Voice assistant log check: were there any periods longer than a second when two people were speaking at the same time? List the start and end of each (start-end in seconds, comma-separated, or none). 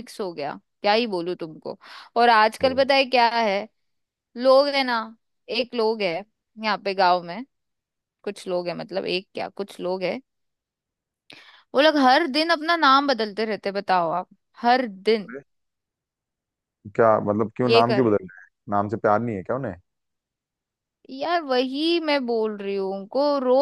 none